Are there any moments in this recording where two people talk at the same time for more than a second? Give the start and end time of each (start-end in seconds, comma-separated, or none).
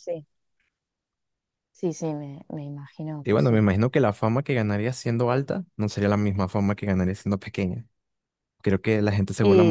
none